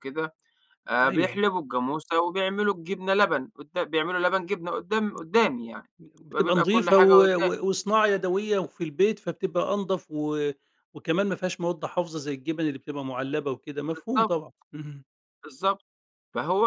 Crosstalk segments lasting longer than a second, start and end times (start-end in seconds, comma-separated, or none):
6.3-7.6